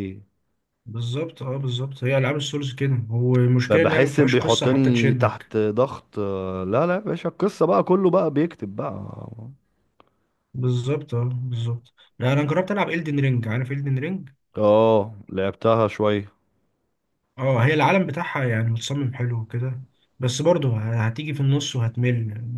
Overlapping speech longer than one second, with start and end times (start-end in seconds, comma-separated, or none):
3.7-5.5